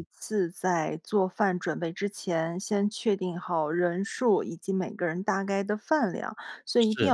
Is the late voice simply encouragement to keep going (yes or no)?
yes